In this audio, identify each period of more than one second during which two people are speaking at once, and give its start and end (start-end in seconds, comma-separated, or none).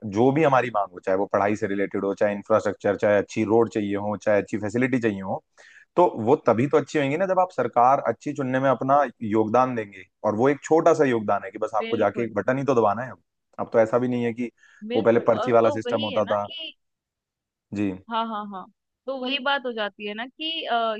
15.0-16.5